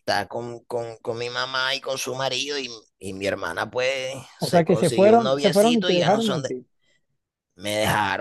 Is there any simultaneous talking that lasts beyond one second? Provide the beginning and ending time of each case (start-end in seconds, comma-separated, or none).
4.4-6.5